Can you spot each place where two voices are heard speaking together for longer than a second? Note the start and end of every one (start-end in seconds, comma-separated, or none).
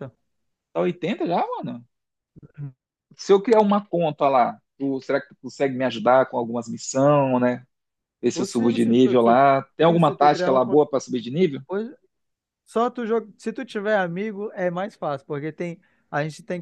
8.3-10.8